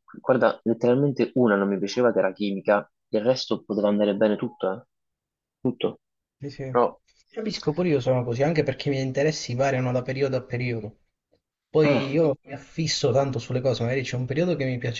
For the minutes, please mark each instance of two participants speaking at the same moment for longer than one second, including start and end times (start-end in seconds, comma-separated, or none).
none